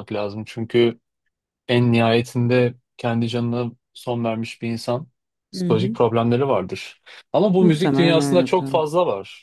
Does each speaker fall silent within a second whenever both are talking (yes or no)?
no